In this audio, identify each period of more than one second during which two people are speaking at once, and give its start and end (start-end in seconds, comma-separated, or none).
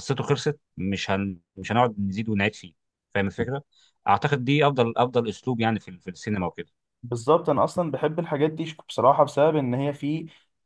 none